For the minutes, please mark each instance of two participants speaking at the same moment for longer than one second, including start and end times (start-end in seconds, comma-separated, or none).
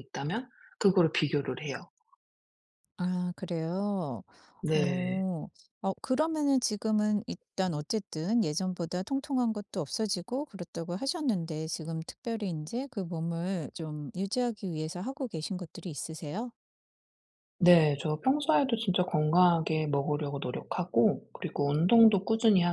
none